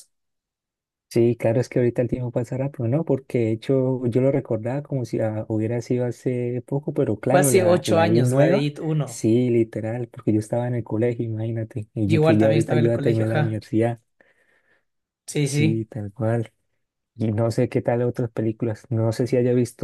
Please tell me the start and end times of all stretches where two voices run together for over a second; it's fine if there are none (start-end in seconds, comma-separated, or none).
7.3-9.2, 12.1-13.6